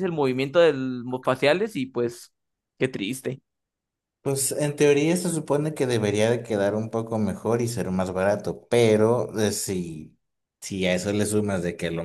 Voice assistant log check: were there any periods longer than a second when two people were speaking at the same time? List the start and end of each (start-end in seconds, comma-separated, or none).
none